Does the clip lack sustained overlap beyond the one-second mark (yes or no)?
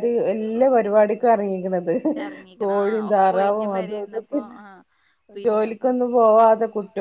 no